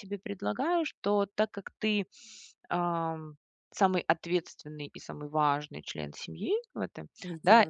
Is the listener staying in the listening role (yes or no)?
yes